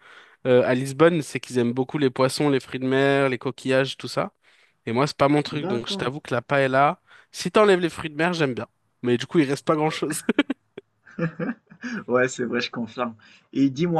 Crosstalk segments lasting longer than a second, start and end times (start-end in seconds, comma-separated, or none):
none